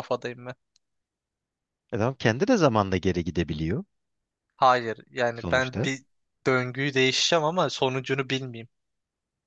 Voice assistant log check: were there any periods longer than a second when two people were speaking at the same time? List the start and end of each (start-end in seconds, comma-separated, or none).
none